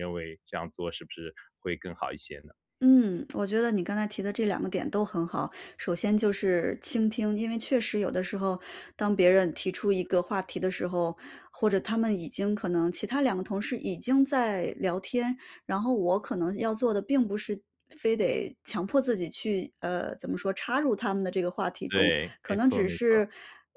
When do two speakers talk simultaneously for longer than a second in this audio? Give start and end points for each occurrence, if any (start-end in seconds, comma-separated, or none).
21.9-23.2